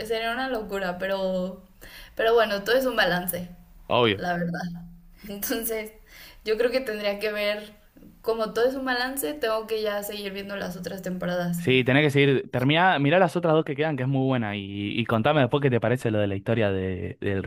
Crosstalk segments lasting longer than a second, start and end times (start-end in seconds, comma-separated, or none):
none